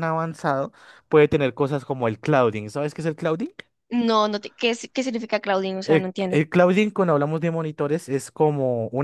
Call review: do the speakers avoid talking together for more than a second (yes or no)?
yes